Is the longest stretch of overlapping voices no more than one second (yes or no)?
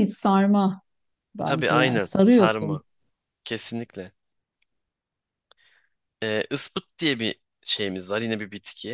no